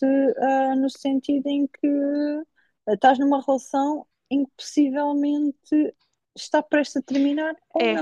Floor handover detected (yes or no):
yes